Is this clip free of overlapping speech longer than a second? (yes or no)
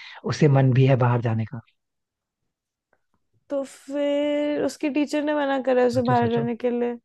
yes